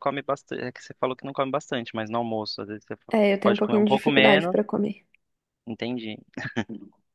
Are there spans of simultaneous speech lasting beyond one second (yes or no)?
yes